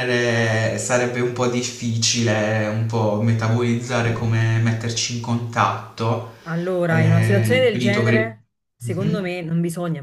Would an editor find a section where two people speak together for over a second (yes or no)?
yes